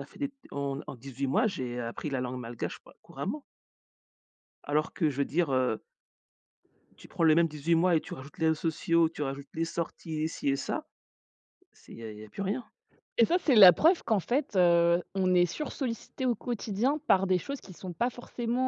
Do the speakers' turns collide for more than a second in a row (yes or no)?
no